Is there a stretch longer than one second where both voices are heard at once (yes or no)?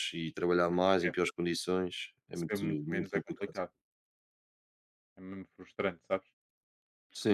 yes